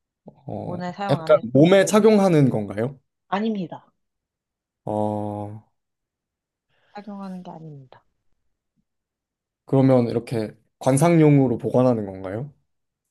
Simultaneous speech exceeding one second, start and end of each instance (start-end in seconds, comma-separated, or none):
0.6-2.3